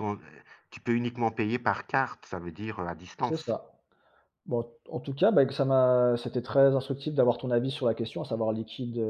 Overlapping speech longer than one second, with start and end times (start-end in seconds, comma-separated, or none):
none